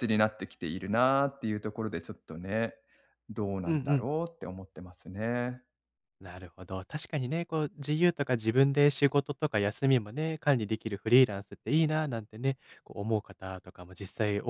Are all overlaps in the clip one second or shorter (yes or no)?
yes